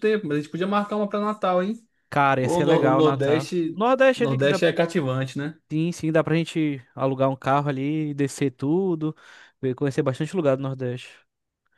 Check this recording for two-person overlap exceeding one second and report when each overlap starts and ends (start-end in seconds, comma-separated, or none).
2.4-4.6